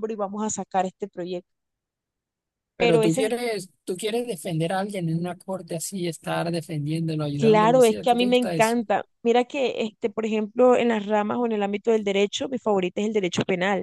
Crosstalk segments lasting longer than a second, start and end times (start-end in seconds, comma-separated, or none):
7.4-8.8